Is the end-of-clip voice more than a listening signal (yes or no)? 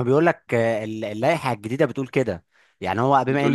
no